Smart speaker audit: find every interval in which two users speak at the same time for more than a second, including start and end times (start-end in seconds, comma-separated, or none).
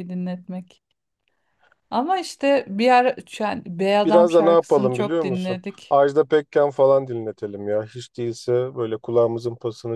4.0-6.0